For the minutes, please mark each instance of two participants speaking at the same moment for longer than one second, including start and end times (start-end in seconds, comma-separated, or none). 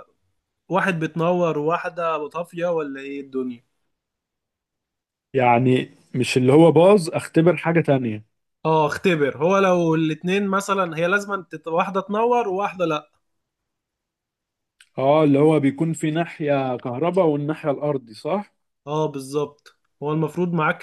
none